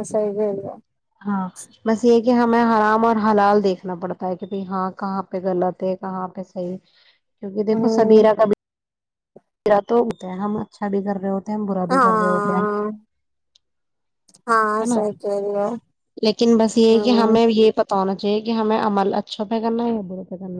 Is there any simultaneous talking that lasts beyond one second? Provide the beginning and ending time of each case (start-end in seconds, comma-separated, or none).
none